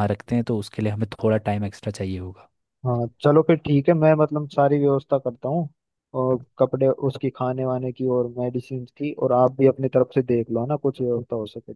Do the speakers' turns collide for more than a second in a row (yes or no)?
no